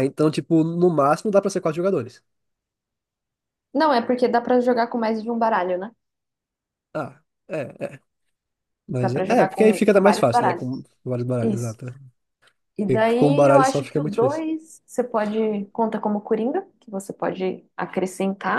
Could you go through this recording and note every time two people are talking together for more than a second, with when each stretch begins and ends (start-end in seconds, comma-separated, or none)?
9.0-10.7, 12.9-14.4